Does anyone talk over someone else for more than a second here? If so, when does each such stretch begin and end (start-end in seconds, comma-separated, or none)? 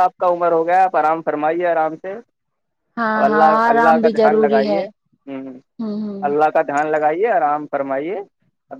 3.3-4.8